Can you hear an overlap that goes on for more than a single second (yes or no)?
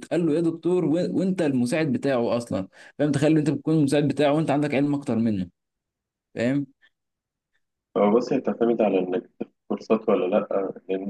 no